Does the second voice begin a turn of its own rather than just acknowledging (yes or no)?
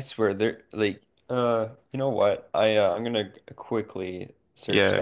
yes